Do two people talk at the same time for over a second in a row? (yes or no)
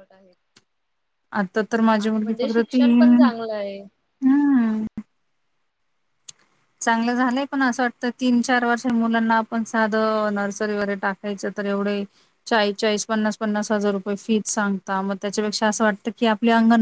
yes